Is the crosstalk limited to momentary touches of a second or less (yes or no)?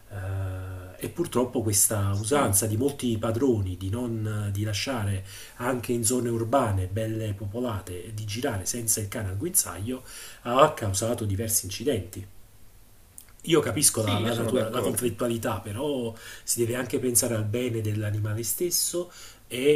no